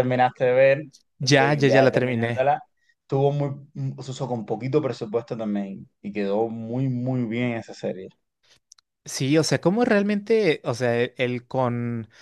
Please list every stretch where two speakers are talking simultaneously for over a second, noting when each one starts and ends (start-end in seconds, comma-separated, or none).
1.2-2.5